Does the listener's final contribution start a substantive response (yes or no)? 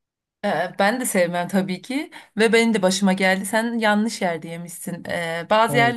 no